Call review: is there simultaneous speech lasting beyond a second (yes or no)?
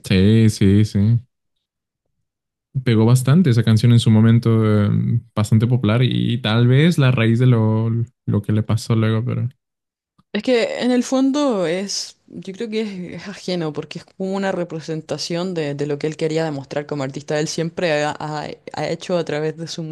no